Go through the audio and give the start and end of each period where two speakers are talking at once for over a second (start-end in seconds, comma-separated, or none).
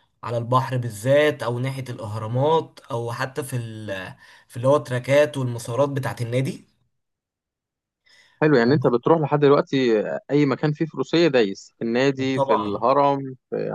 none